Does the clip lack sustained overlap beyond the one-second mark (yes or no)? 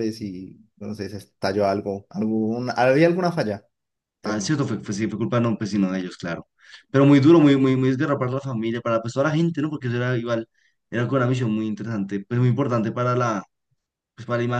yes